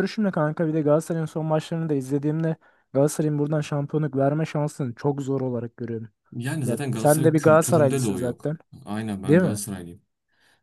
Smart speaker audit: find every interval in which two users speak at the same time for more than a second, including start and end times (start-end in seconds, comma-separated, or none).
6.7-8.6